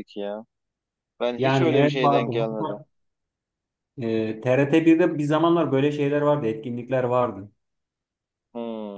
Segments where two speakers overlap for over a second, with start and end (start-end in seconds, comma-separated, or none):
1.4-2.8